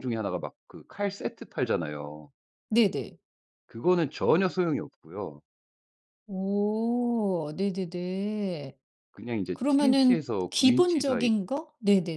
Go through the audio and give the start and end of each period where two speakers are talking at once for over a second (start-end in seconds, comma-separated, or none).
9.5-11.3